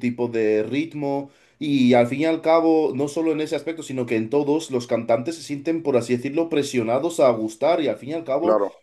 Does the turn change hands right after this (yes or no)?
no